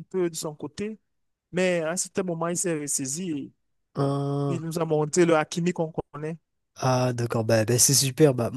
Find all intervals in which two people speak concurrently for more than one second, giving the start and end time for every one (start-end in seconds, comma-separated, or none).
none